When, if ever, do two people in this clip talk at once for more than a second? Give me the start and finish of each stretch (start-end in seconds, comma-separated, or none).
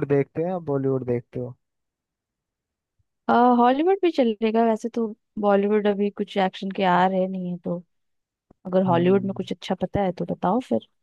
none